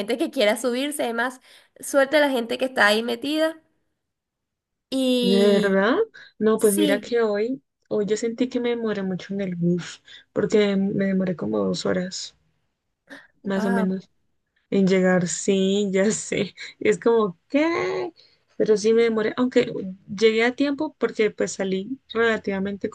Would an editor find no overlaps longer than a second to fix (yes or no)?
yes